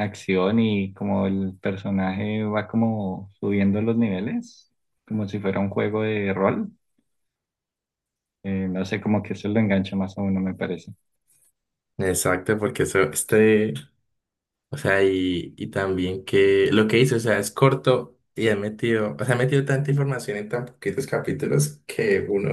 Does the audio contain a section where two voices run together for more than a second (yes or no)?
no